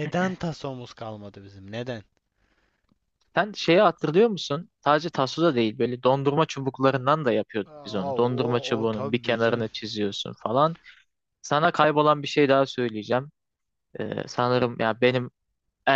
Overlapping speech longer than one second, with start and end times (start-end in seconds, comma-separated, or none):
7.7-9.7